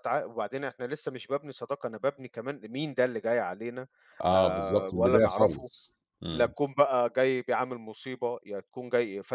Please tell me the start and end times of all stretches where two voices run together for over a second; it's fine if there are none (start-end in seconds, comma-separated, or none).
4.3-5.7